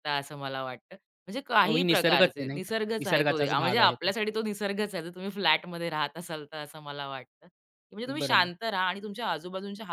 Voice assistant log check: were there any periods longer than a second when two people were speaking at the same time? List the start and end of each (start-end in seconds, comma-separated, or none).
1.6-4.1